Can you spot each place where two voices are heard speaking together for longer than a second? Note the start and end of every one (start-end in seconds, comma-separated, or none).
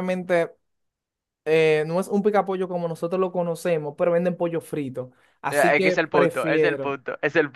5.5-7.0